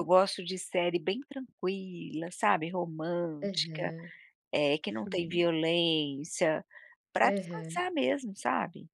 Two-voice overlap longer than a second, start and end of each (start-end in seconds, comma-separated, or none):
none